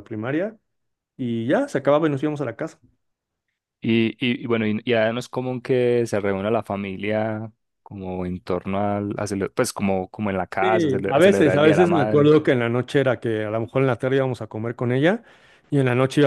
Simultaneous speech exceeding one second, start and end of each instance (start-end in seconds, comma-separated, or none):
10.6-12.3